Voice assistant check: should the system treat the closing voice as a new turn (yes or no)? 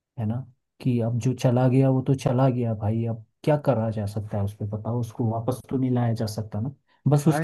yes